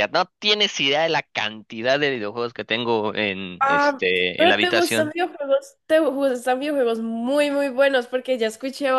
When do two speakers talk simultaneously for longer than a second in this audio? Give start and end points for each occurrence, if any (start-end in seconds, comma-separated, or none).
3.6-5.2